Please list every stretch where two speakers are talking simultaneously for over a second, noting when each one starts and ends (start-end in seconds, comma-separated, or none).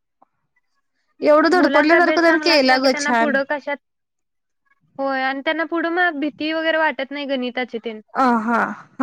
1.6-3.1